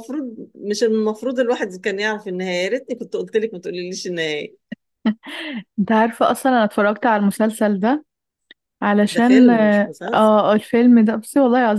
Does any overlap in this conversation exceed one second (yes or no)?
yes